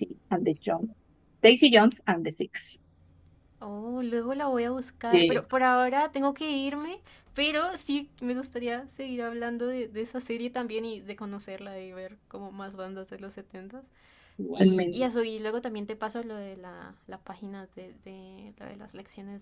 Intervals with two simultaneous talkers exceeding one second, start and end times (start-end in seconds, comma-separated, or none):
none